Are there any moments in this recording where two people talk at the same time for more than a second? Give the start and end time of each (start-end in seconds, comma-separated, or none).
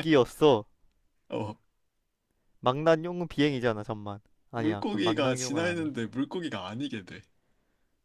4.5-5.9